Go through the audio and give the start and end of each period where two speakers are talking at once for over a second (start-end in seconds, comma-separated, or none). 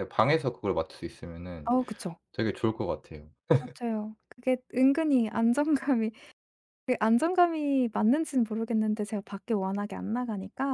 none